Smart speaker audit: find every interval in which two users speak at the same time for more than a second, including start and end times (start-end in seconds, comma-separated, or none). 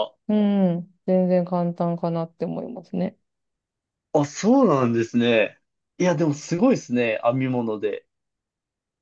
none